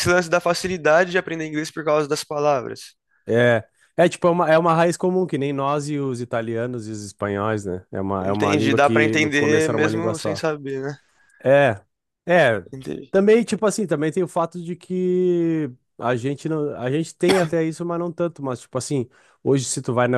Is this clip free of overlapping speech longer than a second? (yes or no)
no